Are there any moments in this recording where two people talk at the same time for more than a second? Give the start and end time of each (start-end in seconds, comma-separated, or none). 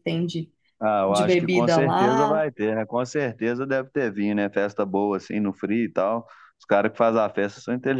1.1-2.4